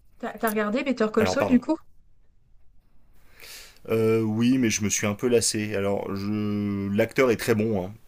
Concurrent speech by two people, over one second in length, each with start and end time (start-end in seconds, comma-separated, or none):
none